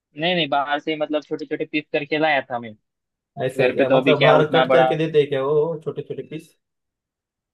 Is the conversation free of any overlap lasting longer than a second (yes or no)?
no